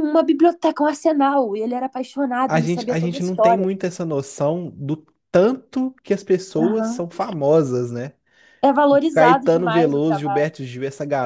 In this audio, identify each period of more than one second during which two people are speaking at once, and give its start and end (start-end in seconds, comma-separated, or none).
2.5-3.7, 8.9-10.5